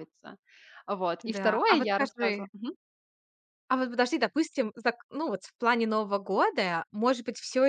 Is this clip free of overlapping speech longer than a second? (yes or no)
no